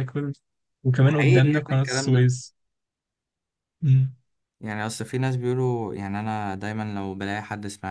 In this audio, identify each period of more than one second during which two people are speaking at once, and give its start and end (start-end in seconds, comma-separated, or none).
1.1-2.3